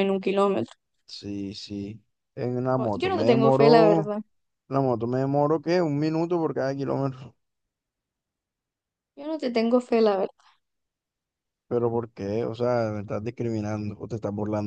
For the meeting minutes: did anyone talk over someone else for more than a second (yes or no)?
yes